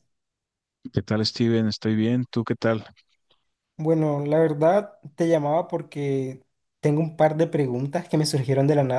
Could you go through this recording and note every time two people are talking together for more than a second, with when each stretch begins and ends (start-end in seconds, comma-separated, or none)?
none